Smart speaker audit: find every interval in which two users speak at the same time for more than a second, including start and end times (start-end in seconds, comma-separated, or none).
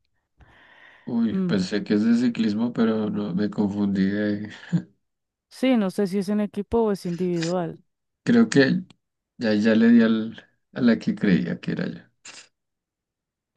none